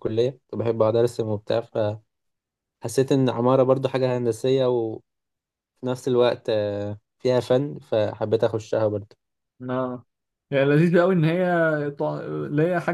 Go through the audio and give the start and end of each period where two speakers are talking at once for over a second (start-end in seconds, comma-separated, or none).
none